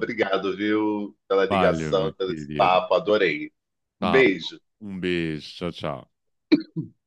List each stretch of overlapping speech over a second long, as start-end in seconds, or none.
1.4-2.8